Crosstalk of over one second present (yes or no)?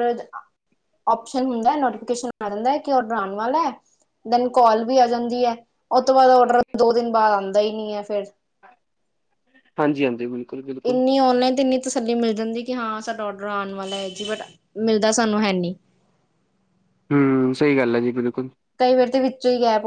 no